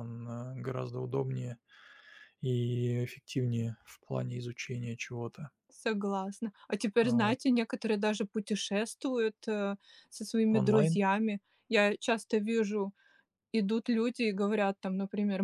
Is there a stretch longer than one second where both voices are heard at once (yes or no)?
no